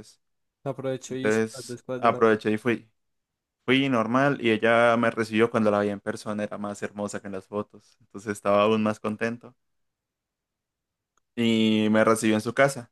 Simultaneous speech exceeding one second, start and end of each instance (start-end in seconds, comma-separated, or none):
1.1-2.4